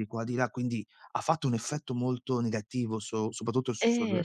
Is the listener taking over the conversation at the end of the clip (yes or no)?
yes